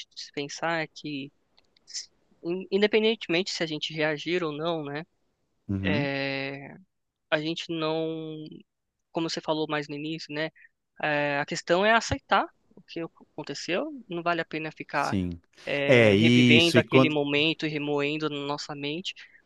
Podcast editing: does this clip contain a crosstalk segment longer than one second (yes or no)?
yes